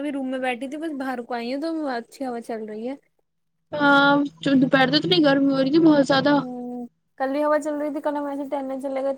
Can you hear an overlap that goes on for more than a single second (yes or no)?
no